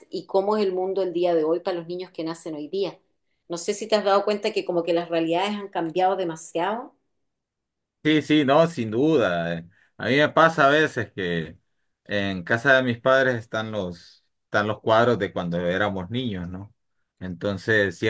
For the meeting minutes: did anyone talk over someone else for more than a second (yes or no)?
no